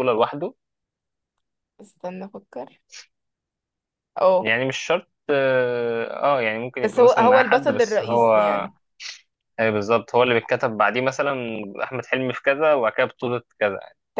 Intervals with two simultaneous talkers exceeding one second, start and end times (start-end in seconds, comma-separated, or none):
6.8-8.3